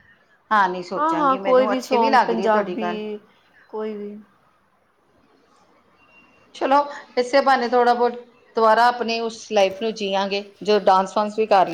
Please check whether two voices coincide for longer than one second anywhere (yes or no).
yes